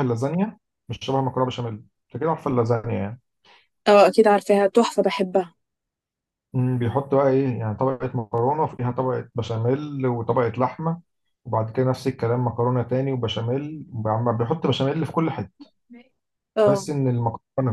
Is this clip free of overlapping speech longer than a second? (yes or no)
yes